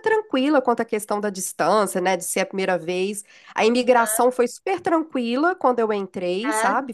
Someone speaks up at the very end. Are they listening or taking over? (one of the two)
listening